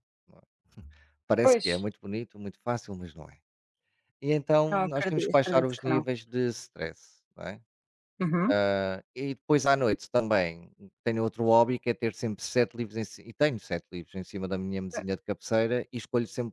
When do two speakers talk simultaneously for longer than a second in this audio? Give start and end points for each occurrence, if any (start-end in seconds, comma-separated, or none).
4.7-6.1